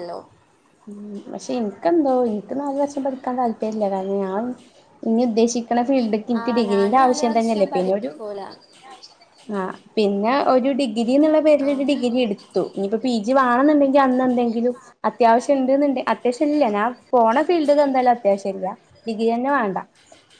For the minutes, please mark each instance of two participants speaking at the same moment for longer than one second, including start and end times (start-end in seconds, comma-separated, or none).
6.4-8.1